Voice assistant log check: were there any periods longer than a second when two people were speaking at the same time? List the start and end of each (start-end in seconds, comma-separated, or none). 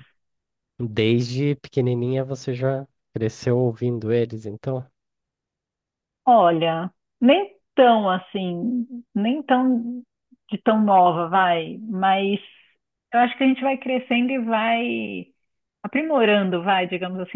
none